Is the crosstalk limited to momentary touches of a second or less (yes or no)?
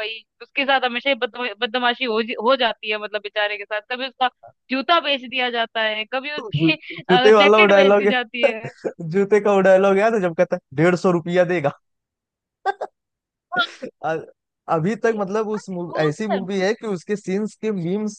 no